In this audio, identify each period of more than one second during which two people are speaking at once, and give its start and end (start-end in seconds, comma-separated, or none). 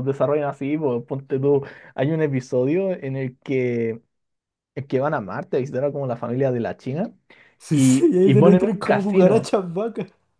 7.7-9.5